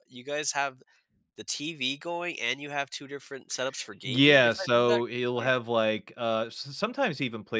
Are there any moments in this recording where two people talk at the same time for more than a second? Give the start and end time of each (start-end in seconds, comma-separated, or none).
4.0-5.5